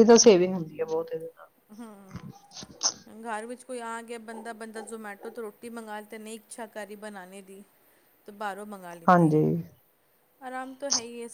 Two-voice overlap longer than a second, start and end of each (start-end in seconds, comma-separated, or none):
none